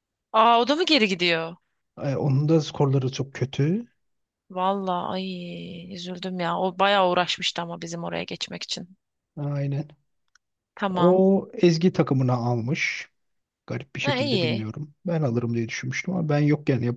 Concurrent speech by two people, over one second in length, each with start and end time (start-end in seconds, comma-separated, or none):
none